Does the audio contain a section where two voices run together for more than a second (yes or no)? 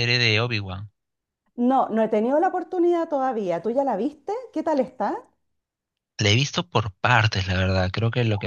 no